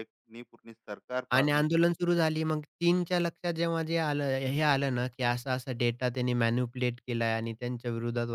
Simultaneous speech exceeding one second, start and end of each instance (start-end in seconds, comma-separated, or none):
none